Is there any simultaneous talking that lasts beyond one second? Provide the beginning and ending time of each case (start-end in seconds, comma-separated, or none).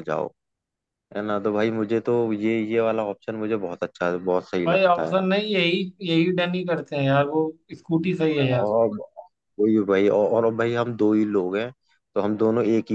none